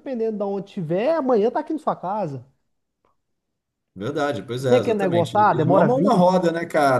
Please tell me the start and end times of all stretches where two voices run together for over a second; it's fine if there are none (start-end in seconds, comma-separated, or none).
4.7-6.3